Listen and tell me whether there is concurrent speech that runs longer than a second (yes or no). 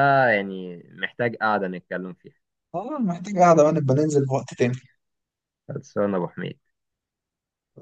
no